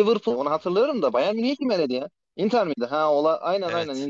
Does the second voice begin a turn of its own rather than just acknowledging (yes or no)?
yes